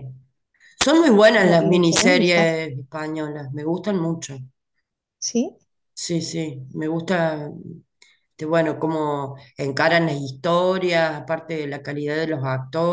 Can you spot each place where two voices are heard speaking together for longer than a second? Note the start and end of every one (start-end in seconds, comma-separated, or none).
1.3-2.5